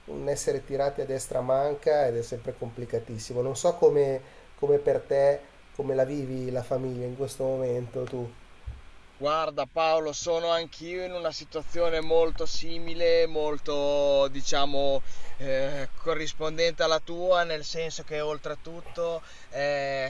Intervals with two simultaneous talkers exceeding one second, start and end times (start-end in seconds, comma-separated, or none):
none